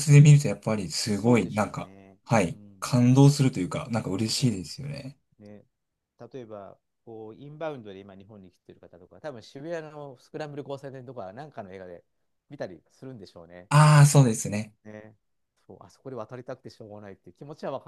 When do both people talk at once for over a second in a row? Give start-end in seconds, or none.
0.9-2.9